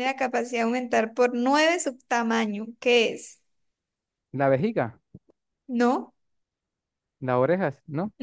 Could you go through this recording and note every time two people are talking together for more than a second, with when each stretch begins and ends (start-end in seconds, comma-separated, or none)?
none